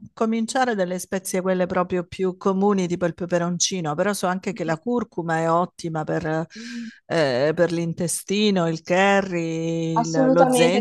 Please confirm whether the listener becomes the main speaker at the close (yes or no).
yes